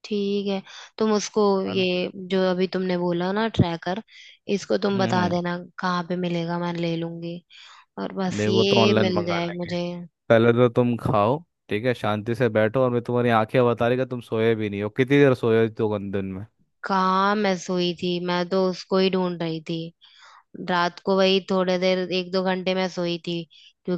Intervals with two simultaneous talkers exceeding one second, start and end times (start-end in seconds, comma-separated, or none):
8.3-9.7